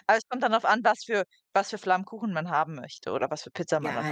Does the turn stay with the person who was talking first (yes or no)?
no